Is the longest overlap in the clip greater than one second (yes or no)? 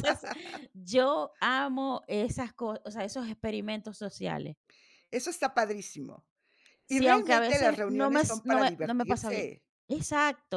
yes